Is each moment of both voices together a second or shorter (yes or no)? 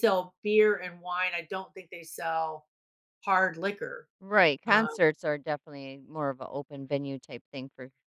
yes